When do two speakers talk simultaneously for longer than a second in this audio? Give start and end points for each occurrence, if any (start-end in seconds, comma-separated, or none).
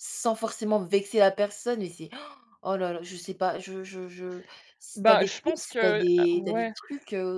5.0-6.7